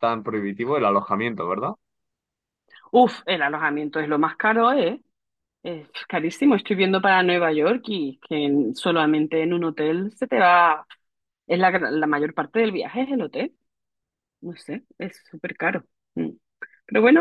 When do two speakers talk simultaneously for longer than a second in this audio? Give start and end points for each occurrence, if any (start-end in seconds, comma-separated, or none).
none